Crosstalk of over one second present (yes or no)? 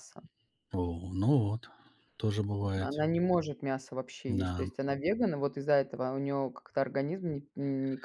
no